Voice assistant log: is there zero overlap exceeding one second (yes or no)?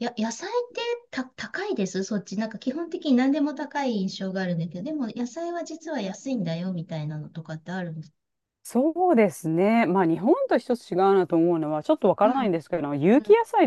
yes